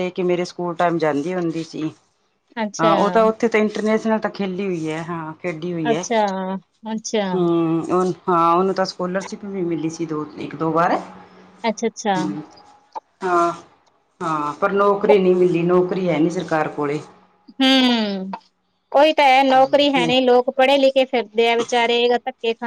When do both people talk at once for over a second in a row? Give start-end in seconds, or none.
none